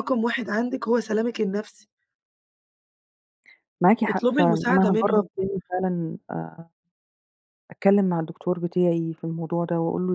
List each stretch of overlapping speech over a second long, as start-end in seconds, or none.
4.1-5.3